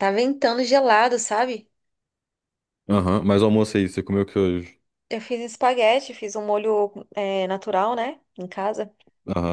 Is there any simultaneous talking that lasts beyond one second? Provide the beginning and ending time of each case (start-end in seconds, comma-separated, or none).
none